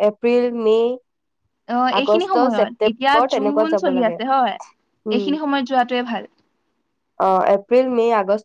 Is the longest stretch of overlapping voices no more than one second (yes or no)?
no